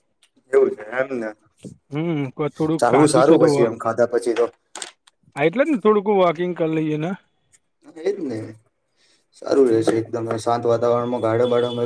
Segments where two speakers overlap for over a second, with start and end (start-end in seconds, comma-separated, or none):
none